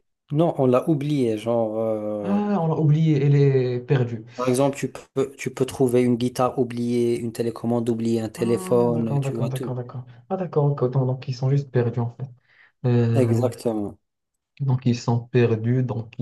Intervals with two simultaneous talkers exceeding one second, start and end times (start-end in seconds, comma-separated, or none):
8.4-9.8